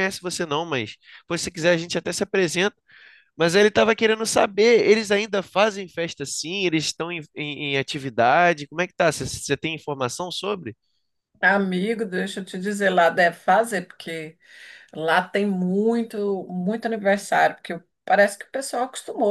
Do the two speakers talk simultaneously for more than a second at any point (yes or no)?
no